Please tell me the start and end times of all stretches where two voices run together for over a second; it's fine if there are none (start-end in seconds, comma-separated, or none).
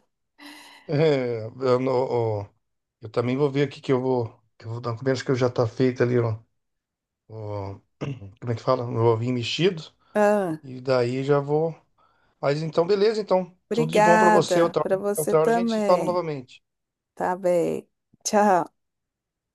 13.7-16.2